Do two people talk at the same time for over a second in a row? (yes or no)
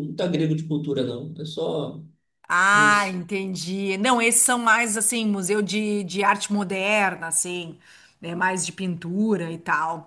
no